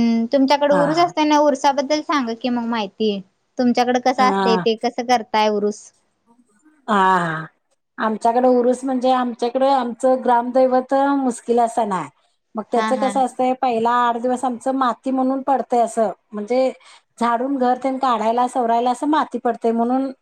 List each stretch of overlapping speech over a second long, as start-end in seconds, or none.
none